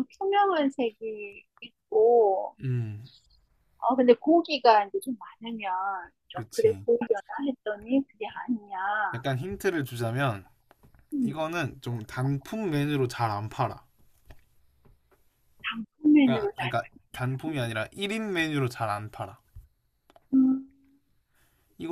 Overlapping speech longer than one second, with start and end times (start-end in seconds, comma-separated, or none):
none